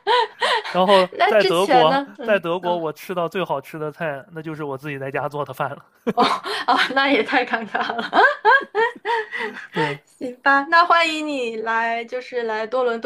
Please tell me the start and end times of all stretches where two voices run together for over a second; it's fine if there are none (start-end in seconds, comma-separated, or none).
1.1-2.9